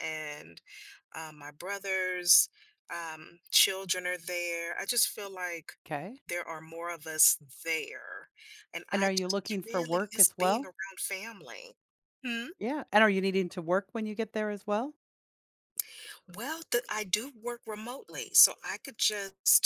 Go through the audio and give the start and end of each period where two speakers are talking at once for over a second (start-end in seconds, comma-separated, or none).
8.9-10.7